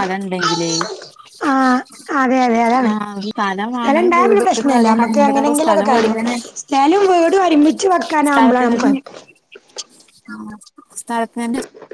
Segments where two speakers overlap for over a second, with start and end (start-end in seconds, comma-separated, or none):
4.2-6.1